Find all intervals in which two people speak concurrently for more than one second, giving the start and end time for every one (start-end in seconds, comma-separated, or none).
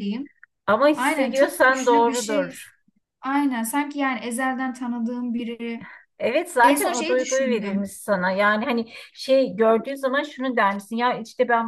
0.9-2.5, 6.6-7.9